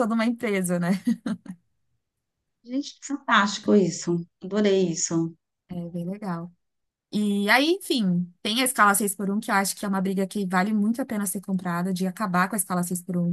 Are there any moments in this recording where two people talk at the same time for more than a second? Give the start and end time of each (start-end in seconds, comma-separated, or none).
none